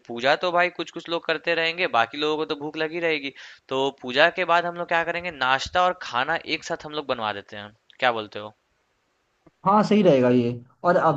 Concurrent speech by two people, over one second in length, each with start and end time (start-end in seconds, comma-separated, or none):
none